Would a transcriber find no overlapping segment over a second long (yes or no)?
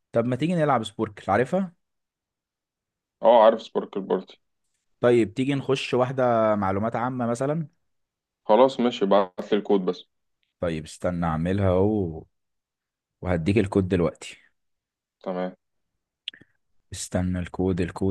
yes